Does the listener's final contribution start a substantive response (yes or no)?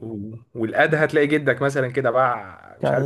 no